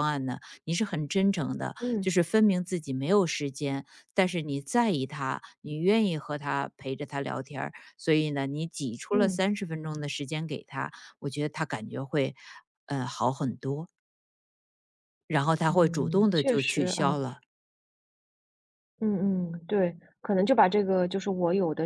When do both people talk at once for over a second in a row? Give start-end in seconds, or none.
15.7-17.2